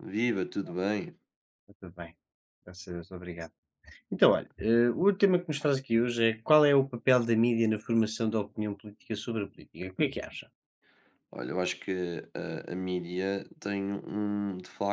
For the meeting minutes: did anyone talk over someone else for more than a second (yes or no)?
no